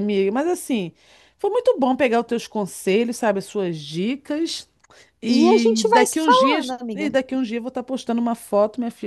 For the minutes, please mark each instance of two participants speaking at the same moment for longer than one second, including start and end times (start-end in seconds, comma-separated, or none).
5.3-7.1